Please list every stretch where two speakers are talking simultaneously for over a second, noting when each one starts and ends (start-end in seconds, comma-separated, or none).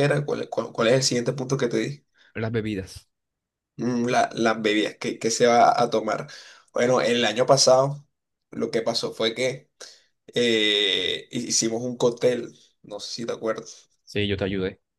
none